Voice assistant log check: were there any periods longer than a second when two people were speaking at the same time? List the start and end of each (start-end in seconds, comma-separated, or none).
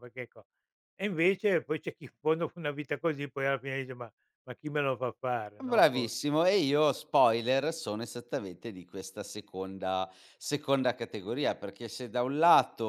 none